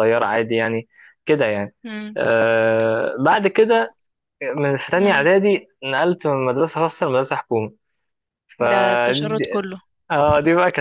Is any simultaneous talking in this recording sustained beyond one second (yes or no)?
no